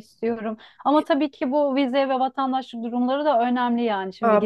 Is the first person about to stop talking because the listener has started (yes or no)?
yes